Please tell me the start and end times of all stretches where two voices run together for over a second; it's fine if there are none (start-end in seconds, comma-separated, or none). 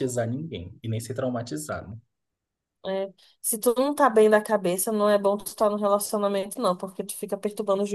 none